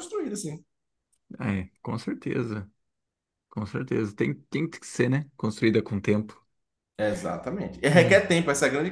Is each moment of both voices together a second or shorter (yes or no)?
yes